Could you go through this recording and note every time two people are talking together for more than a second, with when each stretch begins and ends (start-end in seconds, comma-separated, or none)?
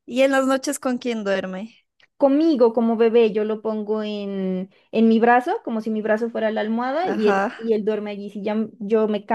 none